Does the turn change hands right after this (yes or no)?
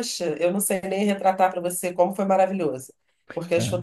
no